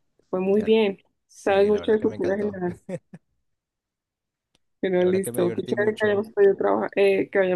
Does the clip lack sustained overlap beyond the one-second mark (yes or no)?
no